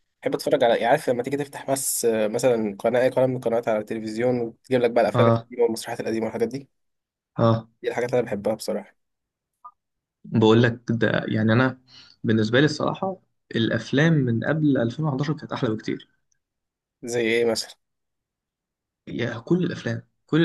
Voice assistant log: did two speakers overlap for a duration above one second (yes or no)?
no